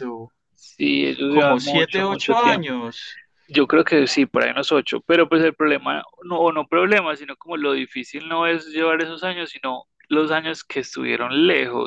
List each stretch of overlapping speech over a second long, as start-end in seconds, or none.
1.3-2.8